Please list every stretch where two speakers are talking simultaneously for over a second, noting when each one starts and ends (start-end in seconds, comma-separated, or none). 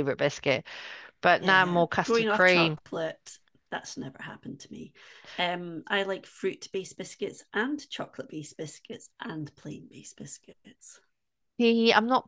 1.4-2.8